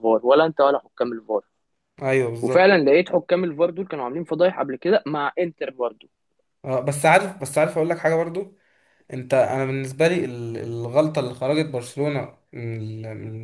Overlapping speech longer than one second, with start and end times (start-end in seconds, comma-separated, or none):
none